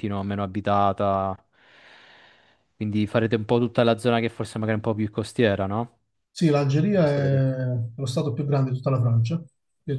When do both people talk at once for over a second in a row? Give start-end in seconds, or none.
none